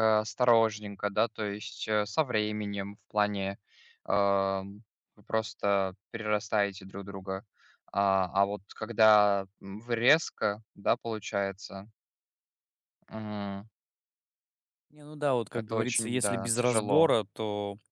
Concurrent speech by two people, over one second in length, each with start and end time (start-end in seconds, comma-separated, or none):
15.5-17.1